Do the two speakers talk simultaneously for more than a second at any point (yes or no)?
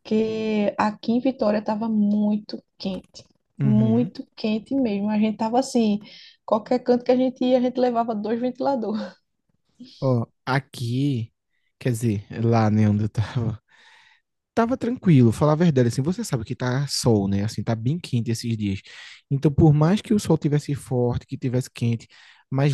no